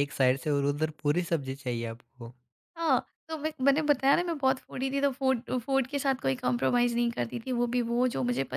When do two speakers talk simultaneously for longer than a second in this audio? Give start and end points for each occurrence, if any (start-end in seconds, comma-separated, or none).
none